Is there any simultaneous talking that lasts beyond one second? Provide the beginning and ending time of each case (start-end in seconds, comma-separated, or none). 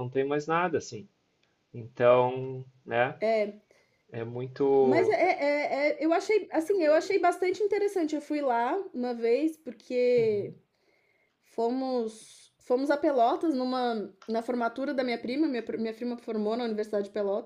none